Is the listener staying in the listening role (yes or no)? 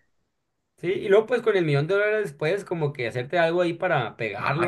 no